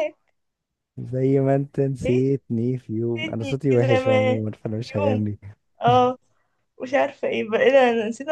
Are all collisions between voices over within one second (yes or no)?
no